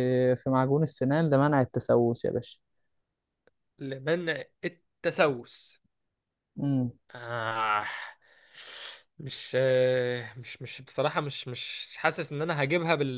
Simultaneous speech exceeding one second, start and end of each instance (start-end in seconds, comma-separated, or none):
none